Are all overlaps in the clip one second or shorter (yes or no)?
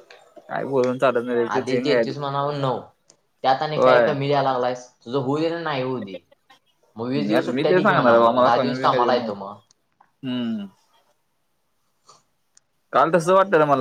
no